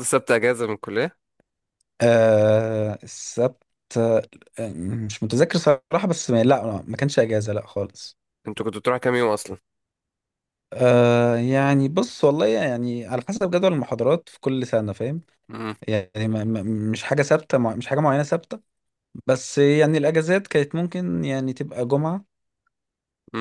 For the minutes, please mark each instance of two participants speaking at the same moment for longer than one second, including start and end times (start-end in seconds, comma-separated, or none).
none